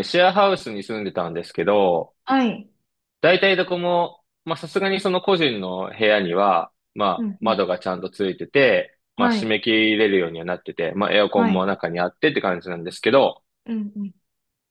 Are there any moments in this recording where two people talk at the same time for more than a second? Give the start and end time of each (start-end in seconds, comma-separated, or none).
none